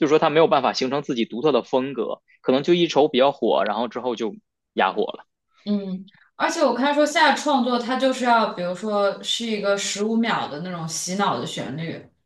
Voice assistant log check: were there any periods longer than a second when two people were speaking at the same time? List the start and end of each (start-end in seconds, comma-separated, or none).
none